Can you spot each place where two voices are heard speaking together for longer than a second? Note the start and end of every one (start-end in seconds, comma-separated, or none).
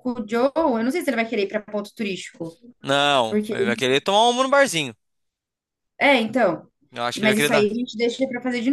none